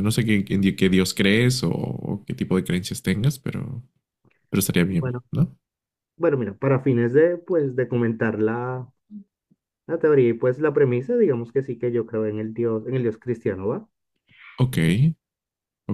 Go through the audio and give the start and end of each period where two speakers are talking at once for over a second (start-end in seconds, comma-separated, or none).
none